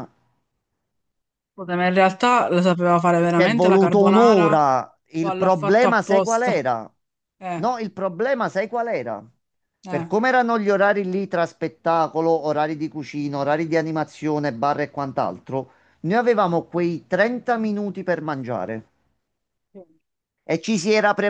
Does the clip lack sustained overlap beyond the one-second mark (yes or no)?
no